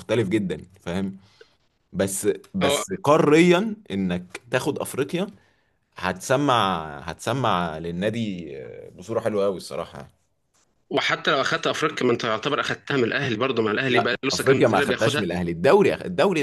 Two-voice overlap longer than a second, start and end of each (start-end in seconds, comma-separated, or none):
13.9-15.2